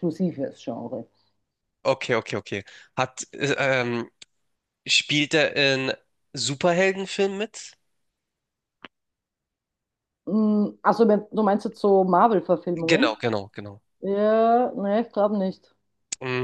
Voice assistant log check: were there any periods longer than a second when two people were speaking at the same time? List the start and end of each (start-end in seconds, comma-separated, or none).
none